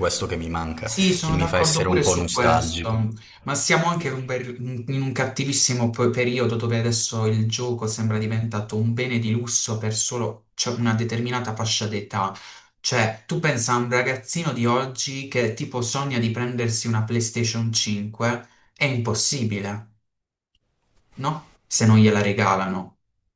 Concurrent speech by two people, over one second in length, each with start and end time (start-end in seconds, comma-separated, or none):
0.8-3.0